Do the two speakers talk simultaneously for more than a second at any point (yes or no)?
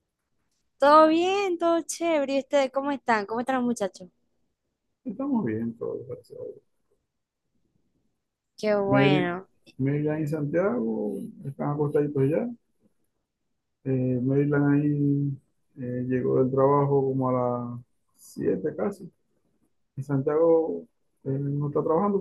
no